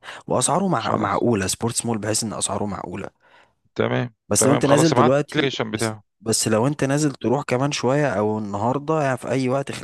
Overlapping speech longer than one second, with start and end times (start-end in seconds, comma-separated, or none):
4.3-6.0